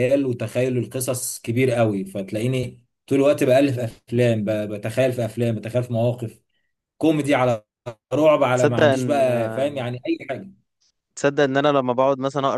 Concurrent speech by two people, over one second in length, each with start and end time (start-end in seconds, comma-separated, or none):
8.5-9.8